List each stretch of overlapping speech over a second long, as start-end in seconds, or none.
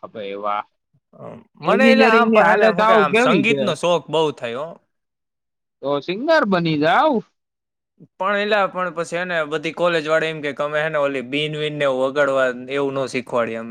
1.7-3.6